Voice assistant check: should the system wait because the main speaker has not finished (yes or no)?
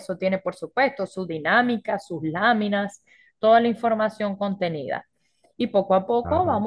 yes